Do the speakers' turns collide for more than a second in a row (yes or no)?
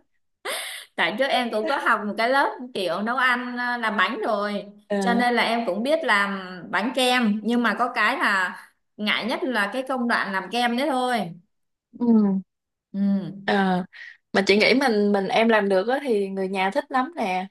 no